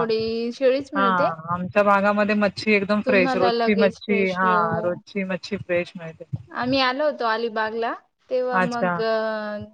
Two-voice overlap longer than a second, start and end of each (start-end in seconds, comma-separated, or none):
3.0-5.0